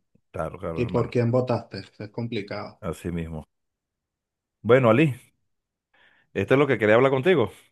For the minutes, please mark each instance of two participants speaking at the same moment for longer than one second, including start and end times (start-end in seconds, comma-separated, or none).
none